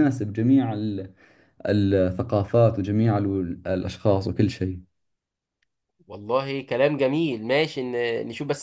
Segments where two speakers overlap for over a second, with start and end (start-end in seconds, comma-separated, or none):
none